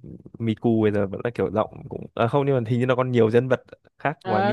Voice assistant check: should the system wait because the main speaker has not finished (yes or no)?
no